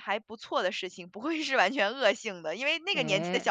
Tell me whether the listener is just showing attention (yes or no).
yes